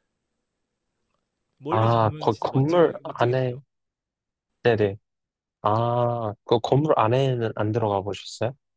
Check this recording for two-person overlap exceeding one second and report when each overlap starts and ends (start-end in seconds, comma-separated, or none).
1.7-3.6